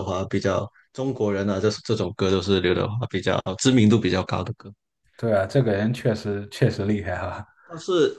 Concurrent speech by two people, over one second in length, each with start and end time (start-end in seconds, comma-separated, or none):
none